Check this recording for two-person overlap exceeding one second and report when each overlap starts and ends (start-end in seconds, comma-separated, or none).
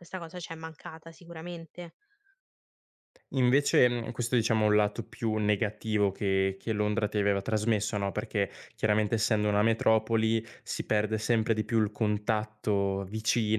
none